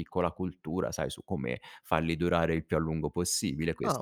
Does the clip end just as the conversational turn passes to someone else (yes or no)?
yes